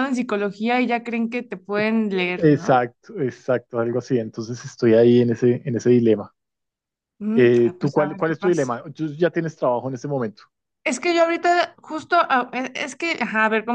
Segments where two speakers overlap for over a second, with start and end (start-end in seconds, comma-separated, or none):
7.3-8.7